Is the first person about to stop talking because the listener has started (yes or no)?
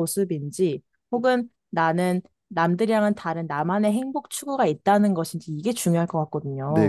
yes